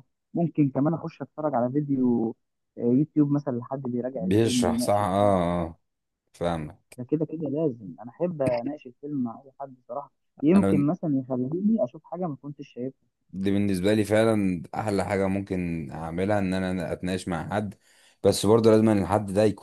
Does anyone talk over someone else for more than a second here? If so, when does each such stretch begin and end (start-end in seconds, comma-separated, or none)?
4.2-5.4